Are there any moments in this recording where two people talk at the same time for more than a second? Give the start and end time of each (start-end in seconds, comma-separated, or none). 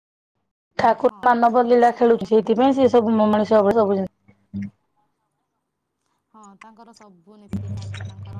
1.1-3.0